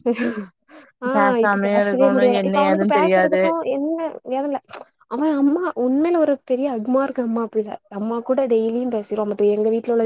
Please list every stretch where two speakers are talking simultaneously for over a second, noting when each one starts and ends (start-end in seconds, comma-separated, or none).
1.1-3.4